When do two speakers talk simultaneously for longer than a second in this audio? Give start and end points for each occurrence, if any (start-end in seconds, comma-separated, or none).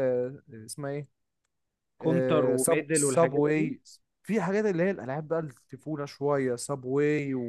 2.0-3.7